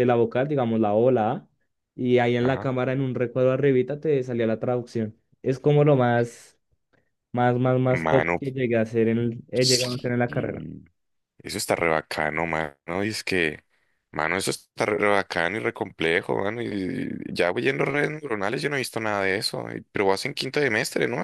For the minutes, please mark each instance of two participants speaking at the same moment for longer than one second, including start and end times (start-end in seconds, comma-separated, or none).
none